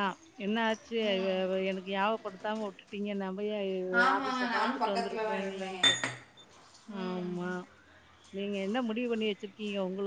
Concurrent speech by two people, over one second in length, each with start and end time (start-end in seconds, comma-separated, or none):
4.2-5.8